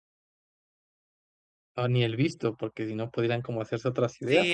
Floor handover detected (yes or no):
yes